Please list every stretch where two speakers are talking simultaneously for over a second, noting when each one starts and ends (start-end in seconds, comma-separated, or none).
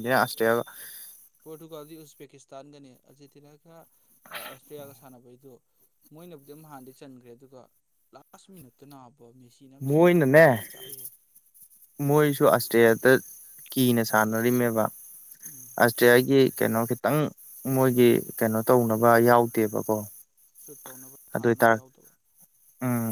none